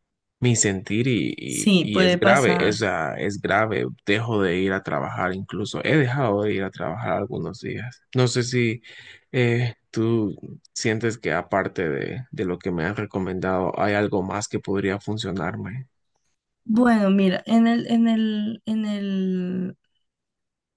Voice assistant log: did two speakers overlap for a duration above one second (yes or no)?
yes